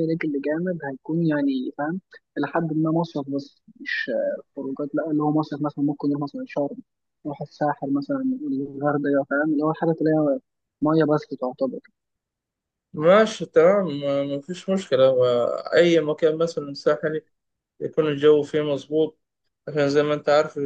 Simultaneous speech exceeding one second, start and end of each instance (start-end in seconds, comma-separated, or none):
none